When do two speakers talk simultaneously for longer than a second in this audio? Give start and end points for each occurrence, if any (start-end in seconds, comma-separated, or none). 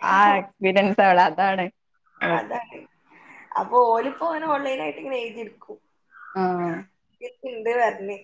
none